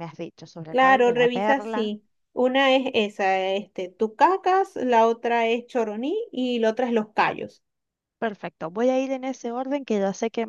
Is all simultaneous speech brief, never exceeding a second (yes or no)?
no